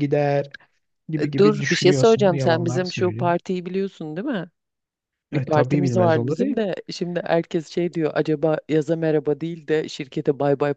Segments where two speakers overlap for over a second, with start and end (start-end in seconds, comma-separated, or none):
1.2-3.4, 5.3-6.6